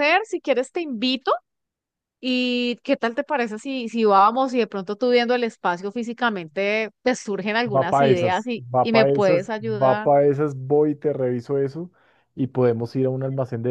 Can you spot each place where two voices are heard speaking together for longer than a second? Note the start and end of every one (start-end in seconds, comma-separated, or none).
7.7-10.1